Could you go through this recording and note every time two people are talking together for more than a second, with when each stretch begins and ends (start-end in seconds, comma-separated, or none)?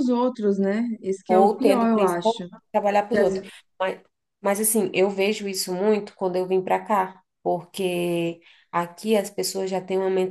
1.3-2.5